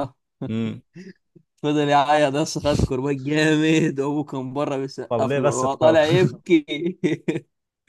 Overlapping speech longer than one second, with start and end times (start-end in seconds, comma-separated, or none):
5.1-6.3